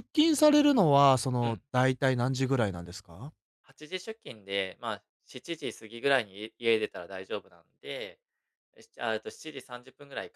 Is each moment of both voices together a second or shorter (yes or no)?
yes